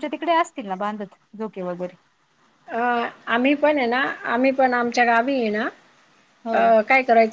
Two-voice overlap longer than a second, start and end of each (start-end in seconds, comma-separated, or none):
none